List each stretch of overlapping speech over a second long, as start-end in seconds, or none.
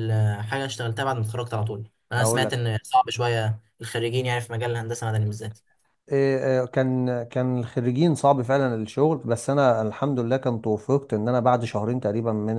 none